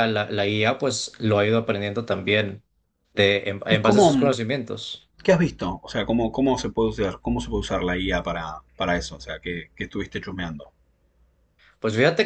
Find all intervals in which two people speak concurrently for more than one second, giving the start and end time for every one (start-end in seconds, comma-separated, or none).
none